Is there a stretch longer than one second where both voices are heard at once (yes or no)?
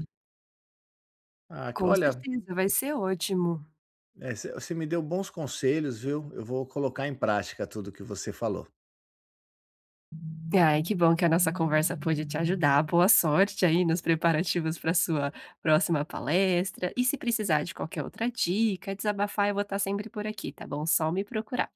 no